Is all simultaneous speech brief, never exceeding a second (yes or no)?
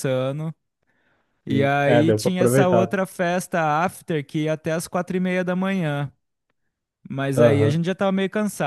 no